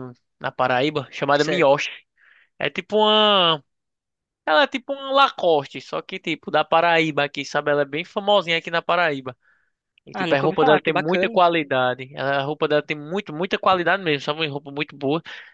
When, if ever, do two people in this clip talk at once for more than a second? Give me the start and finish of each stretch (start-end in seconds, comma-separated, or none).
10.1-11.4